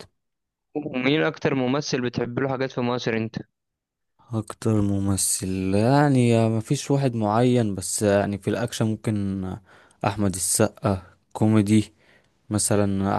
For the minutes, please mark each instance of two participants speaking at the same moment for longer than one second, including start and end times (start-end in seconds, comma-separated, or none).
none